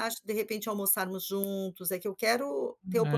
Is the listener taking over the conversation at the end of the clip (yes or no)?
no